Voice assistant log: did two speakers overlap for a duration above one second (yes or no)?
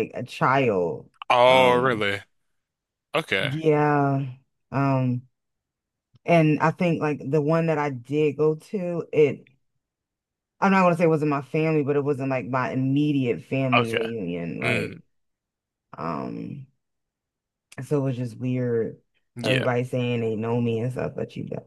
no